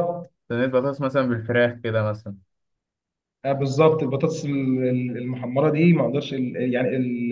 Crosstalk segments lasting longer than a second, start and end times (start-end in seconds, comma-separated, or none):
none